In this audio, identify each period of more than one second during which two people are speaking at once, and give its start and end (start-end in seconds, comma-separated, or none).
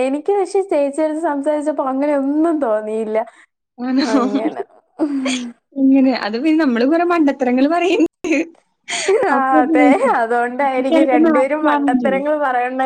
10.9-12.2